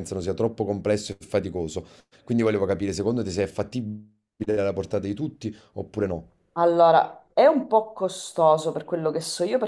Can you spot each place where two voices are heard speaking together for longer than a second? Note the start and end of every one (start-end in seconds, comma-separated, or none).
none